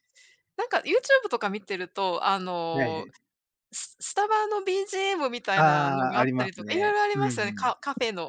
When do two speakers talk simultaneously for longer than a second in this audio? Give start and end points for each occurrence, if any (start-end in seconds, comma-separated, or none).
5.5-7.8